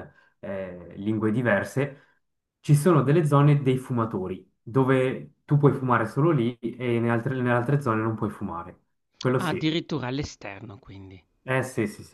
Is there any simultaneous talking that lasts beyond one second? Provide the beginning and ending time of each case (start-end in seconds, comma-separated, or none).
none